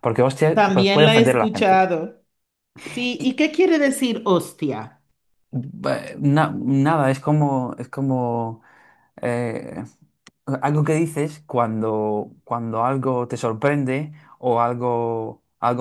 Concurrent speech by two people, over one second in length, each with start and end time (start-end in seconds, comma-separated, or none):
0.5-1.8